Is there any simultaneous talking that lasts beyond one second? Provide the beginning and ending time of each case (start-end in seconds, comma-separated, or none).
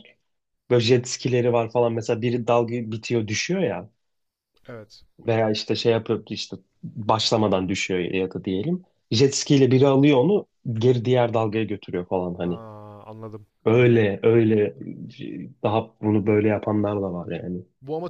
none